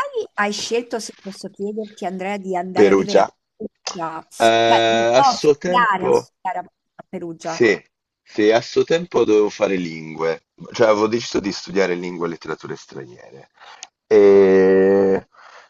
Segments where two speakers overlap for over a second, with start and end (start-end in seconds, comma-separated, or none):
4.4-6.3